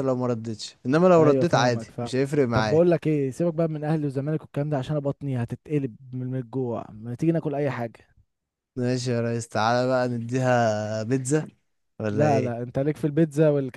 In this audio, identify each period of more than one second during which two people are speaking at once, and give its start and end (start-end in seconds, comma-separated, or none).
1.2-2.8